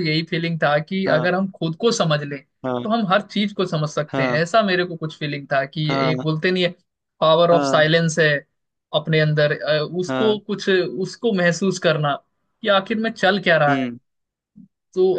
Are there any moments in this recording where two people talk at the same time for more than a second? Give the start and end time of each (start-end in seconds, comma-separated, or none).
none